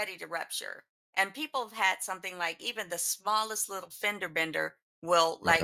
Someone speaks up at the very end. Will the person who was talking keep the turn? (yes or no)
yes